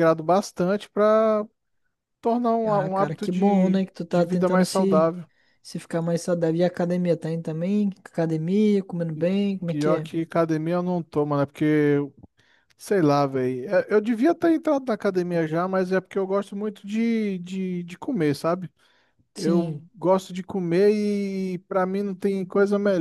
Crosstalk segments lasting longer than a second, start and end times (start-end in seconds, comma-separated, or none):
2.7-5.1